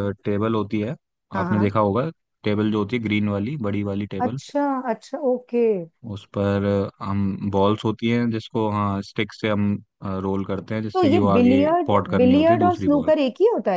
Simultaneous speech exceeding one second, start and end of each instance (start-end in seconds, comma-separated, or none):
10.9-13.1